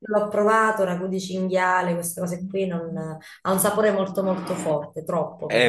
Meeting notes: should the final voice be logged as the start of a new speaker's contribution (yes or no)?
yes